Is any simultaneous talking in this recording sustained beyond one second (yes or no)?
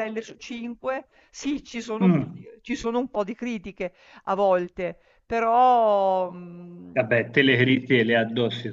no